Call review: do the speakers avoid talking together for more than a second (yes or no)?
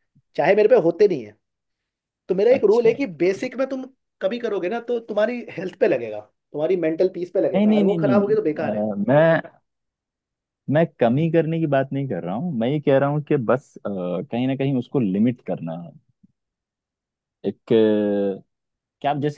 no